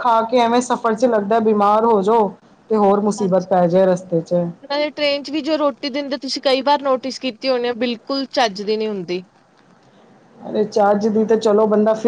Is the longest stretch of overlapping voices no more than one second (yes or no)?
yes